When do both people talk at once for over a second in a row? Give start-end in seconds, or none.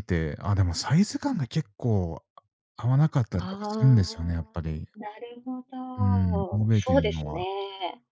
3.4-4.6, 6.0-7.5